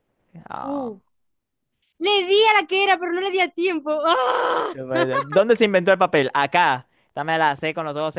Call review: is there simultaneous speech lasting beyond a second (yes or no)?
no